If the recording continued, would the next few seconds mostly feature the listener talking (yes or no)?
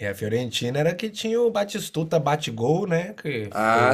no